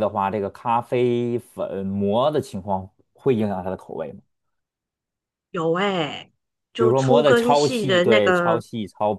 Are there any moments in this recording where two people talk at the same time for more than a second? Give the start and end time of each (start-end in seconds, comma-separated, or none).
6.7-8.6